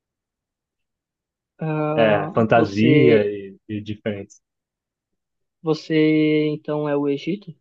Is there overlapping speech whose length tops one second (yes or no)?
yes